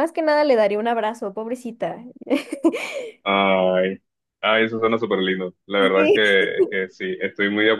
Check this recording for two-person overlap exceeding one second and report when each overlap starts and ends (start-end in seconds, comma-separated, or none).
none